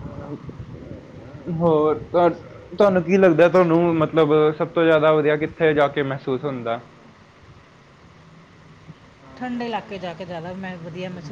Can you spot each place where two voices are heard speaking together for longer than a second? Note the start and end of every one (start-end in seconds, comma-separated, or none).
none